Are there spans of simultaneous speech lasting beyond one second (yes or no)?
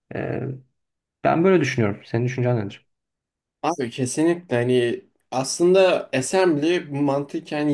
no